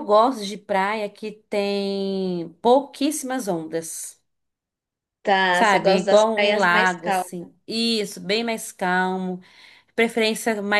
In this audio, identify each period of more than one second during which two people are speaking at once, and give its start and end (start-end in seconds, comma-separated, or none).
5.5-7.3